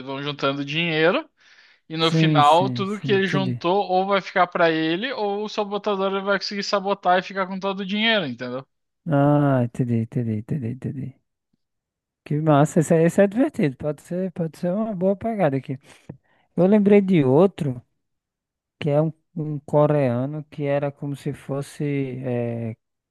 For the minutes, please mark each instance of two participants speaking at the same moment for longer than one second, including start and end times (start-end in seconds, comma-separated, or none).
2.0-3.6